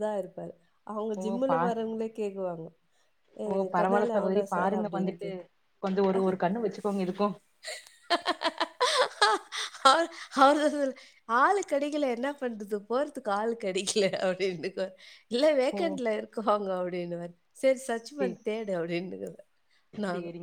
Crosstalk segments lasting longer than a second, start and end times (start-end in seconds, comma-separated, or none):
3.5-5.3